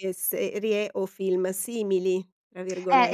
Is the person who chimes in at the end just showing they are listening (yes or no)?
no